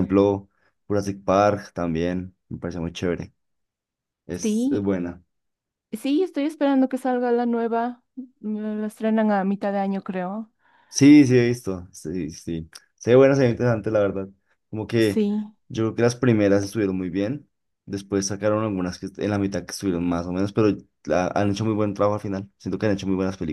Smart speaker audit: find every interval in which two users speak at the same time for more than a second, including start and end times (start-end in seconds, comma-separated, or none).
none